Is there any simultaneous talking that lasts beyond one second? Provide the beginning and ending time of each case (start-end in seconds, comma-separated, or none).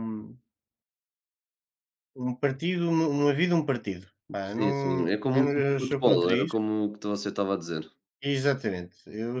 4.4-6.6